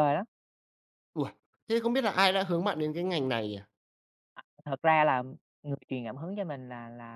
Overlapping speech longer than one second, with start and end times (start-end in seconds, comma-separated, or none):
none